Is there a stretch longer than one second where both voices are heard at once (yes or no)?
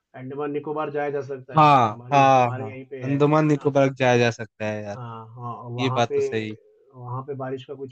yes